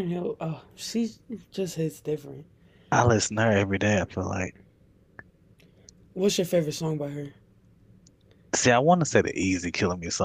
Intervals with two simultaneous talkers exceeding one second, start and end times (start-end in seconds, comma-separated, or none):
none